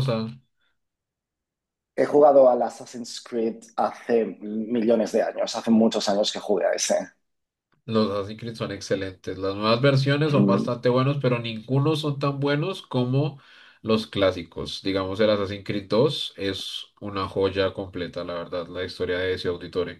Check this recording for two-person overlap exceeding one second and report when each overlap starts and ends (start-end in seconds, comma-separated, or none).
none